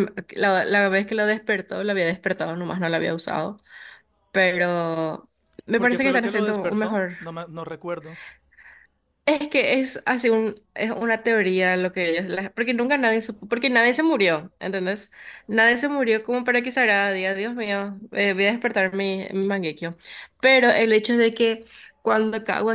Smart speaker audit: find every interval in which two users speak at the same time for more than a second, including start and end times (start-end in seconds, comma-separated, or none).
5.8-7.2